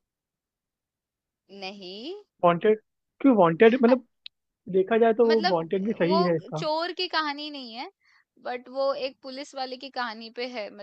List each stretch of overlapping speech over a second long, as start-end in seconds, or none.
5.3-6.6